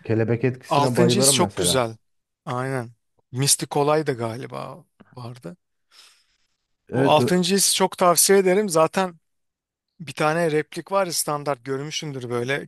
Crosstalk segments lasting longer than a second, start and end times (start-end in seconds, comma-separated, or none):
0.7-1.9